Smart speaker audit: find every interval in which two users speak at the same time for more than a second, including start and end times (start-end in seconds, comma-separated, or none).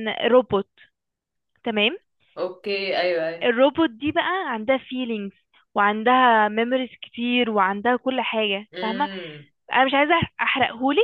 none